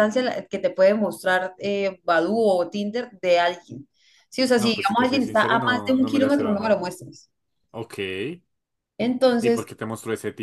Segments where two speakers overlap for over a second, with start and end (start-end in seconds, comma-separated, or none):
4.6-6.8